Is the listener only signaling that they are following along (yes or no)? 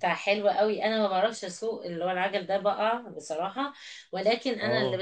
yes